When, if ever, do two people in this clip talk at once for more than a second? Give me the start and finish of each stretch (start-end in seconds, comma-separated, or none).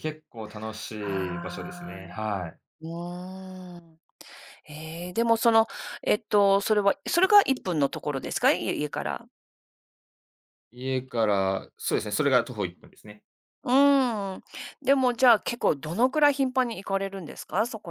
1.0-2.2